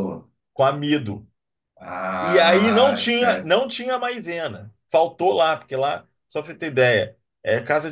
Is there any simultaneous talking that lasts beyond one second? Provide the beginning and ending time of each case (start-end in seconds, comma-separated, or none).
2.2-3.5